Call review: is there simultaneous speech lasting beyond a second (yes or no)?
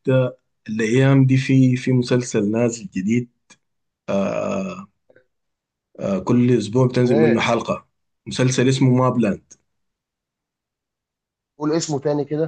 no